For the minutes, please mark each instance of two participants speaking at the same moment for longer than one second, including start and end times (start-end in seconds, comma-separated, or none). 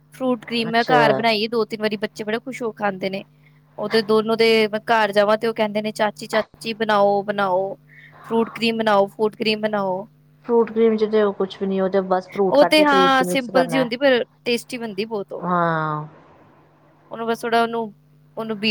12.5-13.8